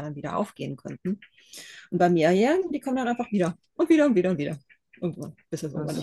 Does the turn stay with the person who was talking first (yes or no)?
no